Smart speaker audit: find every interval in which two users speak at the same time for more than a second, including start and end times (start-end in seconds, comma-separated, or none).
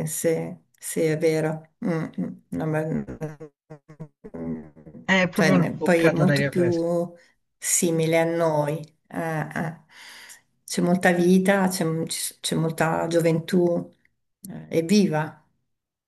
5.3-6.8